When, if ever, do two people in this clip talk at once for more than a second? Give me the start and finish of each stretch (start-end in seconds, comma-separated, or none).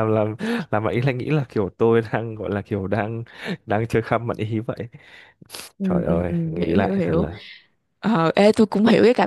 5.8-7.2